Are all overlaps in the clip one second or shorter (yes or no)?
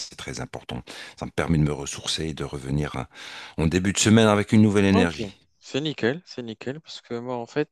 yes